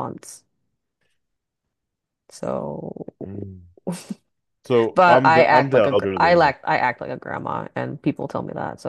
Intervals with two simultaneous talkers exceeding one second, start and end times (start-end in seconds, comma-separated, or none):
5.0-6.5